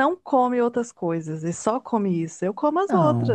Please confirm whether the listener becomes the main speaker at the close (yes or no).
yes